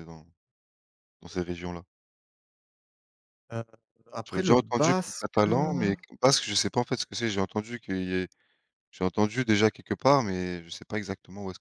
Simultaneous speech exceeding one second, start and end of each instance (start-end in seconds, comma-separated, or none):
4.2-5.9